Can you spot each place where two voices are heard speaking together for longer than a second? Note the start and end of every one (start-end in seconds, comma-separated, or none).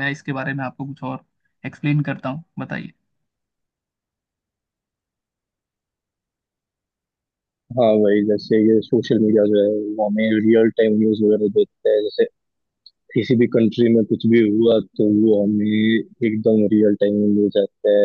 none